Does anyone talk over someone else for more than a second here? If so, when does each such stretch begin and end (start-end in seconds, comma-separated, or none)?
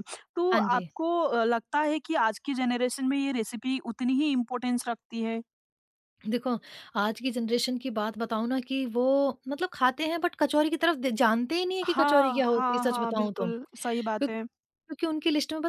11.8-13.5